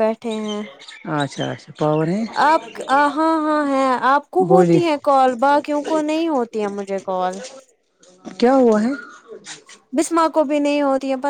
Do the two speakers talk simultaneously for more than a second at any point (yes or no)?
no